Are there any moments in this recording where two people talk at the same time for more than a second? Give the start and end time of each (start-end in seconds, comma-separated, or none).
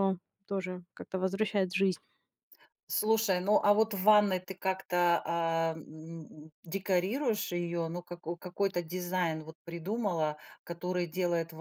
none